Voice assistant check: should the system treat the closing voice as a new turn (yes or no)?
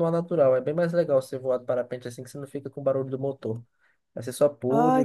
yes